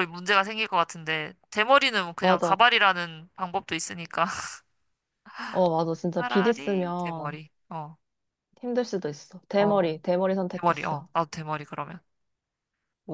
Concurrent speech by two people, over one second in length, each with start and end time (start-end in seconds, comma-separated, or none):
6.2-7.4